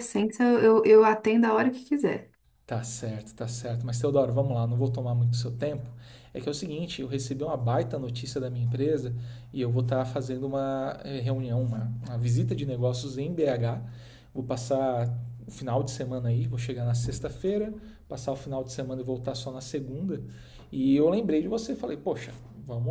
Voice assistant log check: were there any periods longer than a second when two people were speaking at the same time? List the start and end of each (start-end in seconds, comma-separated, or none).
none